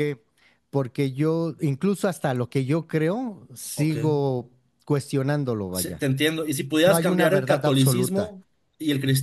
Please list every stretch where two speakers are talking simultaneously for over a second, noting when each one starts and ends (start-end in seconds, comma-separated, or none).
6.9-8.3